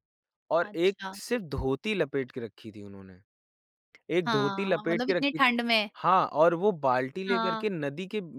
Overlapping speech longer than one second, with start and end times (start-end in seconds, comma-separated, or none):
4.2-5.5